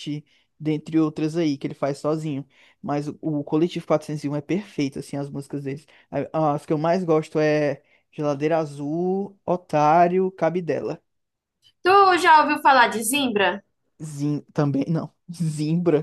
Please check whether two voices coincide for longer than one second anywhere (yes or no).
no